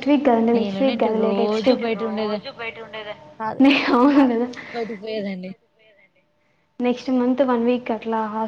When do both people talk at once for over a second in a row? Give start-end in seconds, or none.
0.6-2.4